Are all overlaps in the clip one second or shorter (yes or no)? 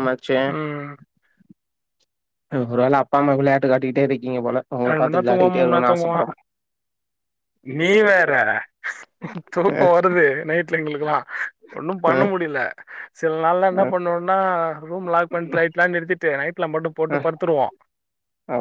no